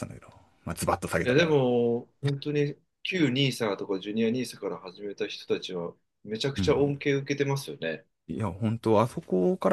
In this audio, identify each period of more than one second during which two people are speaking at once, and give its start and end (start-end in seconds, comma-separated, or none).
none